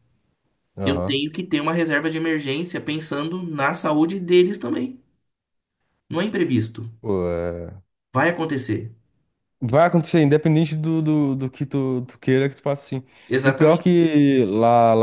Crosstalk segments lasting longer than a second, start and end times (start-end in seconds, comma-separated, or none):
none